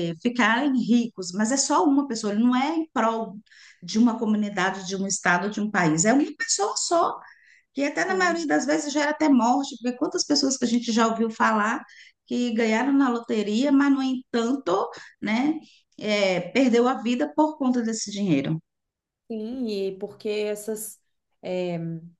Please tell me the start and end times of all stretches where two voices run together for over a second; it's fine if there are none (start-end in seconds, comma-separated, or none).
none